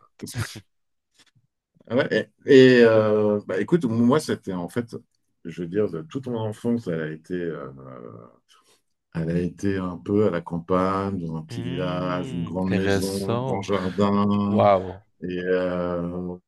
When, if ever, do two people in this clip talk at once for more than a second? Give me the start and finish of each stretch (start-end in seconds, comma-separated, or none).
11.5-13.7